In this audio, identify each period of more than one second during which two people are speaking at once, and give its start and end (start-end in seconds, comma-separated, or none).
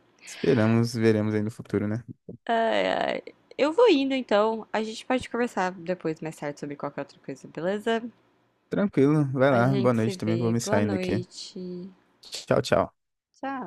9.5-11.2